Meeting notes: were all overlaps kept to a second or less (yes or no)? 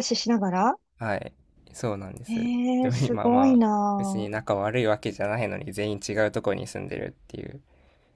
no